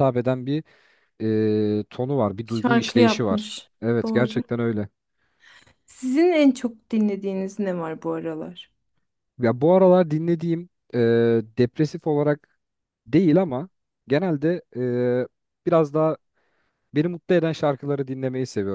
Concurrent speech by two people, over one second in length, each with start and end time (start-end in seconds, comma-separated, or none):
2.5-4.4